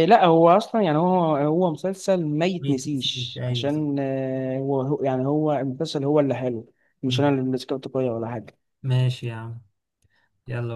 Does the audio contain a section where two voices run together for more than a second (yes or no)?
yes